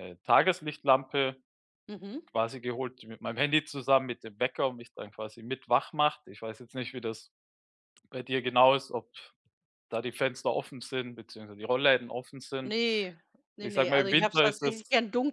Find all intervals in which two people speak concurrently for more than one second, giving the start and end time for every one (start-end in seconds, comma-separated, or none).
13.6-14.8